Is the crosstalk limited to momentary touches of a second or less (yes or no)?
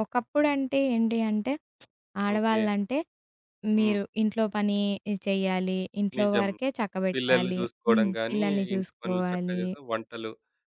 no